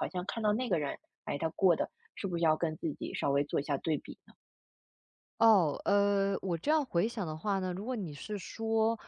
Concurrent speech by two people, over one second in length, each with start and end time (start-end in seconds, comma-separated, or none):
none